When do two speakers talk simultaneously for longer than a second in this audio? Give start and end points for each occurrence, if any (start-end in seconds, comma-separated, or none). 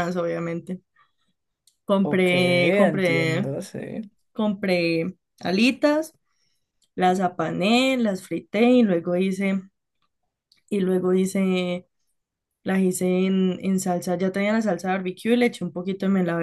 2.0-3.5